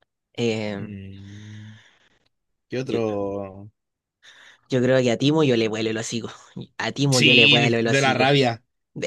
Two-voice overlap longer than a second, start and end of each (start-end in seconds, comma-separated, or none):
7.1-8.4